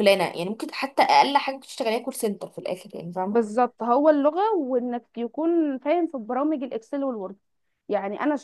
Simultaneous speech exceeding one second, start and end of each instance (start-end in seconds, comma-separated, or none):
none